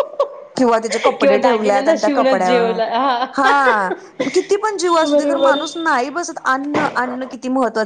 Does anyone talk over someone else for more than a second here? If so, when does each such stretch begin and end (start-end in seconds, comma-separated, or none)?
1.2-2.5